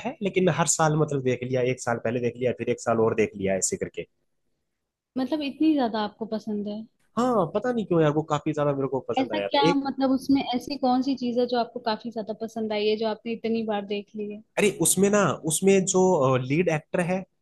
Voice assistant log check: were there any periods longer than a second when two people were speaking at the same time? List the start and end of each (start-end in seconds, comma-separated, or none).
none